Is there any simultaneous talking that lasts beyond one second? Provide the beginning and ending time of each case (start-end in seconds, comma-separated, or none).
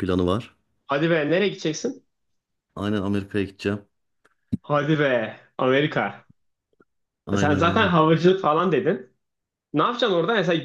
none